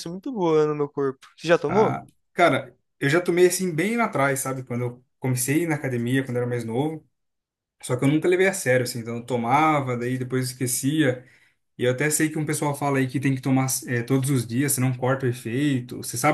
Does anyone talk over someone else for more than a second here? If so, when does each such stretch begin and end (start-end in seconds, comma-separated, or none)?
none